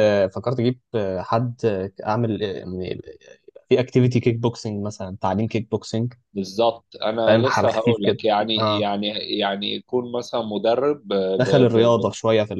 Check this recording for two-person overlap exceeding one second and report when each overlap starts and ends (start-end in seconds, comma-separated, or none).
7.2-8.9